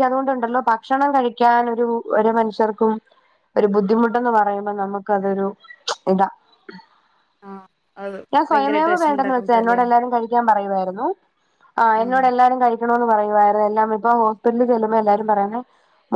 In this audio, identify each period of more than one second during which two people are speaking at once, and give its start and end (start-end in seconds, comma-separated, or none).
8.3-9.8